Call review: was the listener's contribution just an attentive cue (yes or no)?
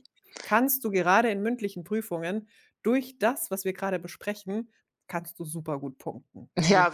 no